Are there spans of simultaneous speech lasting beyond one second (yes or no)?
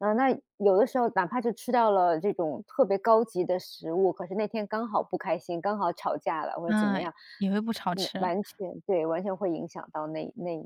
no